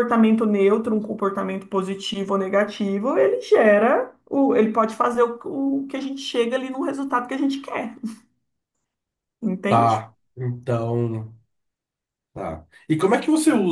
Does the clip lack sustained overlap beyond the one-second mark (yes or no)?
yes